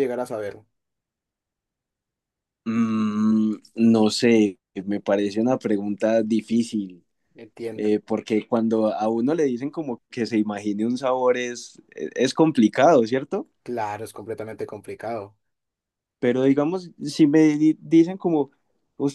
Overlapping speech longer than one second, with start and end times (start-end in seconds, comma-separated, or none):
none